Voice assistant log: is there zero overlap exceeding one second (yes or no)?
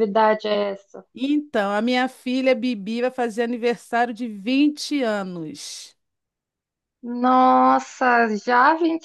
yes